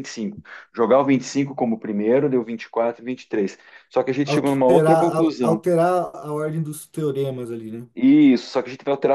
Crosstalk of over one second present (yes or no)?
yes